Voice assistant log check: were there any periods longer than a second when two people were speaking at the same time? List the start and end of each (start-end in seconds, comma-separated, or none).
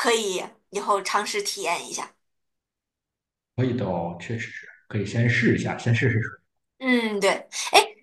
none